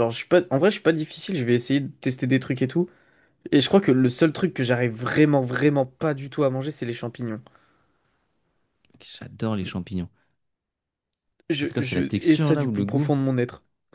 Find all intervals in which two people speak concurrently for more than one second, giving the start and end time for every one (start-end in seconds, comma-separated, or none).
11.6-13.1